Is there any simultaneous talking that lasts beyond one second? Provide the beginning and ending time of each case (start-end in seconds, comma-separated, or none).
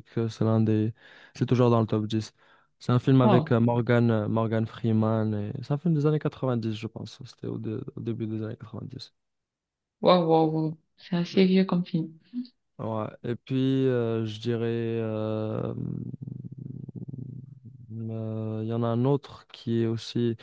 none